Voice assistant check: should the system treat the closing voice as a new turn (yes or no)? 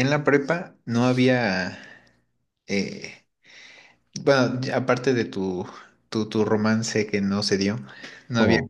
no